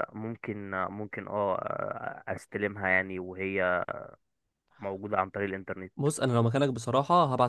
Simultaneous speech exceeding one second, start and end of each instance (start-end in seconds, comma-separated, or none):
none